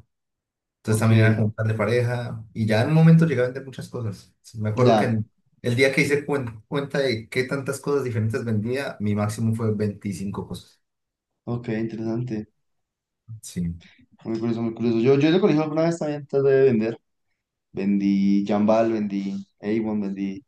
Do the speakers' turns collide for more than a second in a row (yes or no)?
no